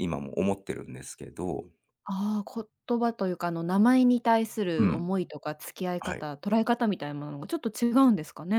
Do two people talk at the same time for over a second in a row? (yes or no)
no